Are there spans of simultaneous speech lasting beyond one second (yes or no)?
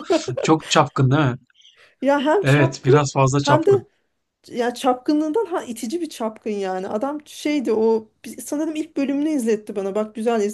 yes